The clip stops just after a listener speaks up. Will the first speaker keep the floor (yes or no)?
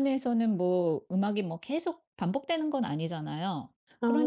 yes